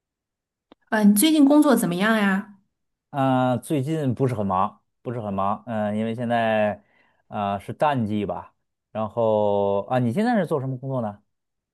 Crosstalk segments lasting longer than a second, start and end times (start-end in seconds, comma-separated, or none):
none